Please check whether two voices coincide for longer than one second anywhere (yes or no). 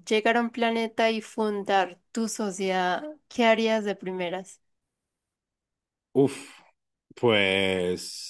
no